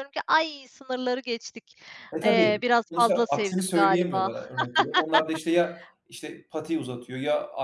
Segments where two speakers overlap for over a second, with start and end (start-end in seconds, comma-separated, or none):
2.2-4.3